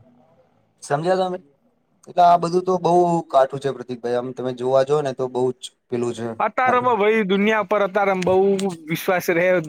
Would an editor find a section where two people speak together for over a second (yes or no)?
no